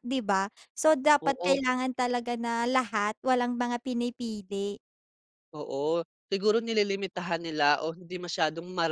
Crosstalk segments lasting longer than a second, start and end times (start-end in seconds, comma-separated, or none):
none